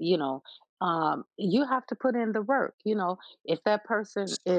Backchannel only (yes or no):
yes